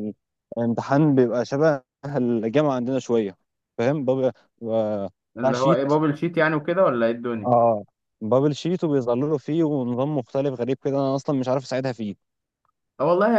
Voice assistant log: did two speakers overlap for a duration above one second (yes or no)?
no